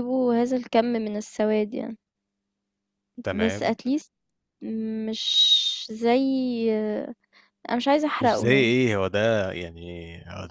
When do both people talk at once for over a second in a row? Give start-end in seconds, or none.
none